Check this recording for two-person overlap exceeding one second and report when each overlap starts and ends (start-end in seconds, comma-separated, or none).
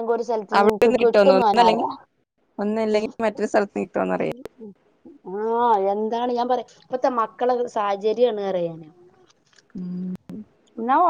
0.6-1.9